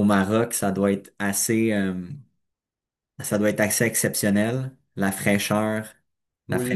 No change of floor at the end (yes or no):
no